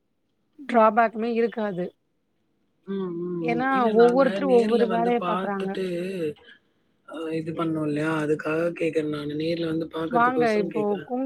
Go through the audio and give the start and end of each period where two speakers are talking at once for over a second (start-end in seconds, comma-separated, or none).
3.5-5.7